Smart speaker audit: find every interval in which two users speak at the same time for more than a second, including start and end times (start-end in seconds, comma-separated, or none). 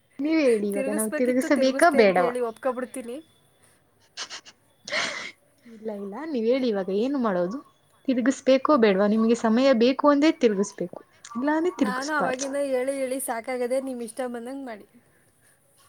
0.7-2.4